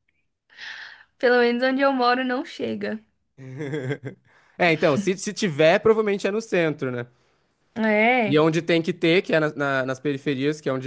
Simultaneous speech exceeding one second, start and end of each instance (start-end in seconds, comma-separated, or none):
none